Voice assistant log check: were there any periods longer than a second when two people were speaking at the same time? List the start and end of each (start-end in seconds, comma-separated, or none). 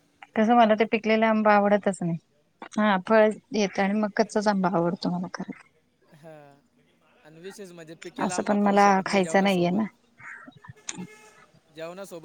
8.3-9.8